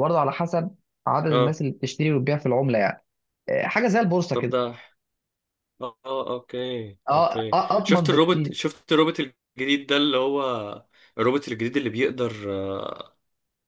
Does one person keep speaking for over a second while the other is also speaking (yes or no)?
yes